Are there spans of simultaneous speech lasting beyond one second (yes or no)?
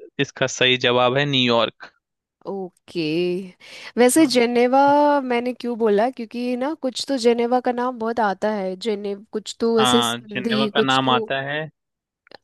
yes